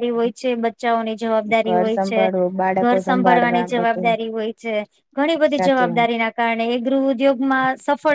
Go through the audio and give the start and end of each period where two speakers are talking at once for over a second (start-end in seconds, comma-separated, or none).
1.7-4.1